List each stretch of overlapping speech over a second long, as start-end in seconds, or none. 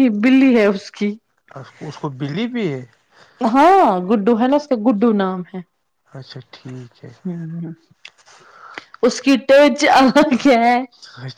none